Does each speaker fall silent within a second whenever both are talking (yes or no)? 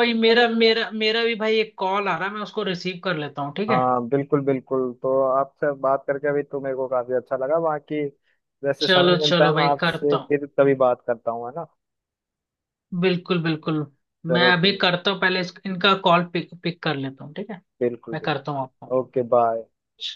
no